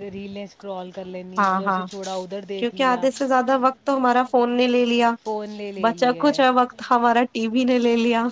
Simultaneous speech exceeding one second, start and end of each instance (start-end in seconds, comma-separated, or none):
none